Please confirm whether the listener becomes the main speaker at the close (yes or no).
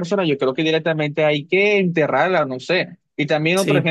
no